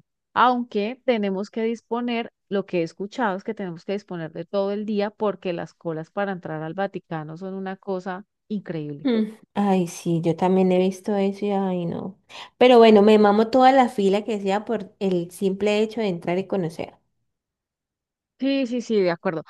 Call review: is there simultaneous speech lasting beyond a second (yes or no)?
no